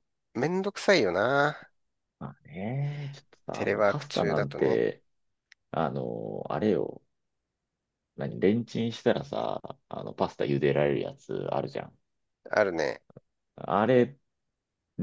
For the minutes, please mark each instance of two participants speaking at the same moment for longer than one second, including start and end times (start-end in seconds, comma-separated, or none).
3.5-4.8